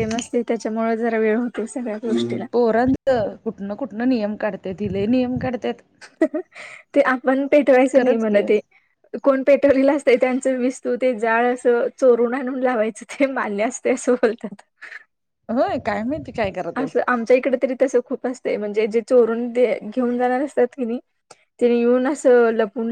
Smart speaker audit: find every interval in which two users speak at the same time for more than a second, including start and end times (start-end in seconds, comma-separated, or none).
none